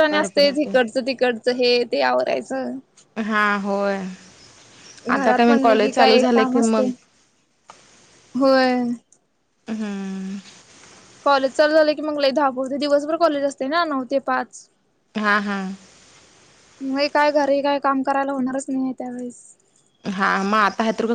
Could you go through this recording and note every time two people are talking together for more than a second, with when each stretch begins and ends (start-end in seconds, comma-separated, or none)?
5.2-6.9